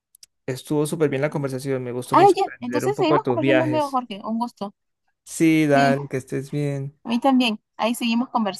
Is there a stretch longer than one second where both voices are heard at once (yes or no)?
yes